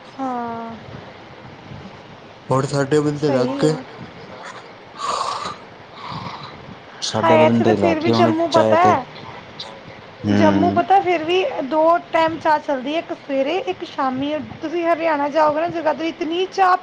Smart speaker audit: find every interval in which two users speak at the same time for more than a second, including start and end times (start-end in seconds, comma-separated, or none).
7.2-8.8